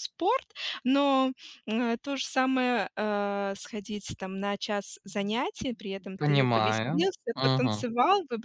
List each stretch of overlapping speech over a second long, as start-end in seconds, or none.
6.2-7.8